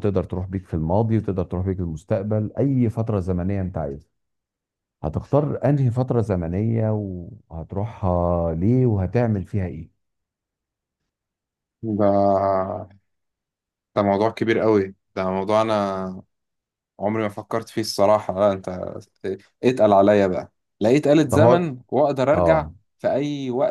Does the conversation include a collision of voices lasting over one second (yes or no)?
no